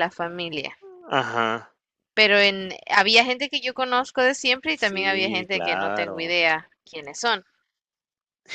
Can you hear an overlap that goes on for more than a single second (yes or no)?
yes